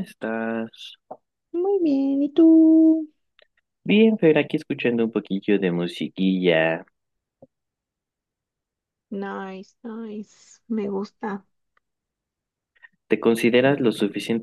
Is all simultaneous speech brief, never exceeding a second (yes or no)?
yes